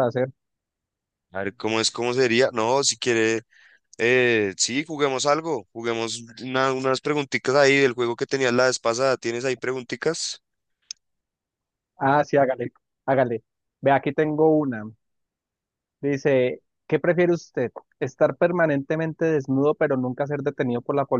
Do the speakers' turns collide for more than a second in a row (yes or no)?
no